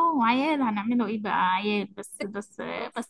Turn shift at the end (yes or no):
no